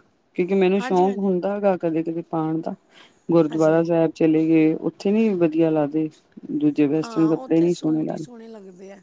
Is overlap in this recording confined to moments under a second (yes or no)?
no